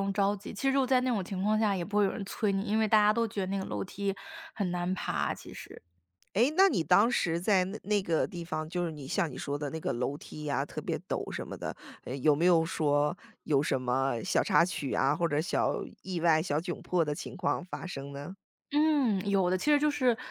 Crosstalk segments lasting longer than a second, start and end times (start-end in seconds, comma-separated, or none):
none